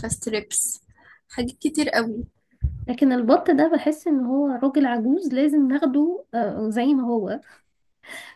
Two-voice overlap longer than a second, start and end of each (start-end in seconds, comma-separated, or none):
none